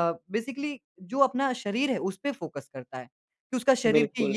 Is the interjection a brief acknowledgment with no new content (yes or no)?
yes